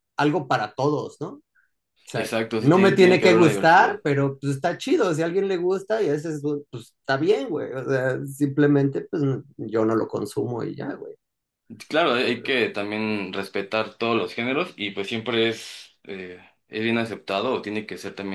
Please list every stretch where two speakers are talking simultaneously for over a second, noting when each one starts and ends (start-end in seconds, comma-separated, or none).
2.1-4.0